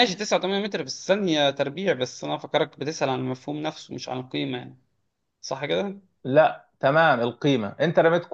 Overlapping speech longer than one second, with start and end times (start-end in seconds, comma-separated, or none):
none